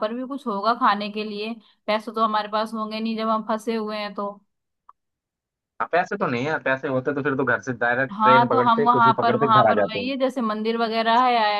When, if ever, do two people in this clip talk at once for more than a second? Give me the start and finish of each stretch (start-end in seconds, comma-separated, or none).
8.1-10.1